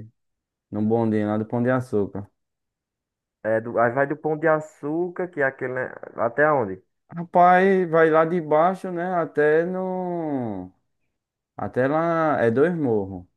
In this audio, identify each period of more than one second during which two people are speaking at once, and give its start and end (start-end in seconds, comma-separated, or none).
none